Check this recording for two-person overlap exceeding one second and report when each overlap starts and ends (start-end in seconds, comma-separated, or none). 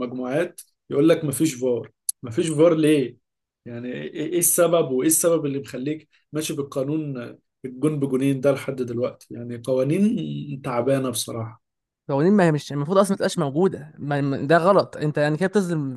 none